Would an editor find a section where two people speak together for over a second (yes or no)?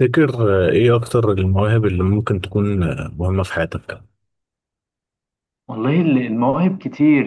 no